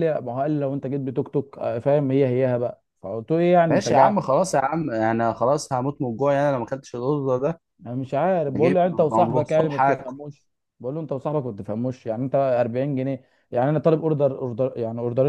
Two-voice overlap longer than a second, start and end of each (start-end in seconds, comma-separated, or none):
8.5-10.1